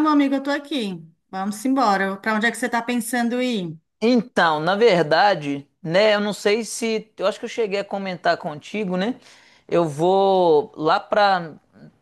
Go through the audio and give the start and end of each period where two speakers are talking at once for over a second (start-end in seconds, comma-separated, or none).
none